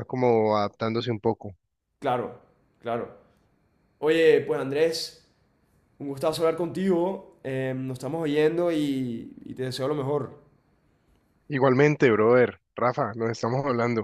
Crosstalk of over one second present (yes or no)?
no